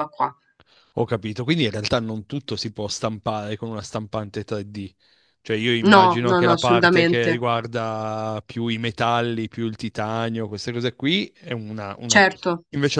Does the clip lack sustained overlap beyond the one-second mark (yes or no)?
no